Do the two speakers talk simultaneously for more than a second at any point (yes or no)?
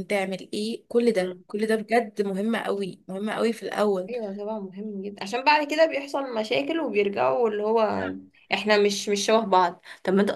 no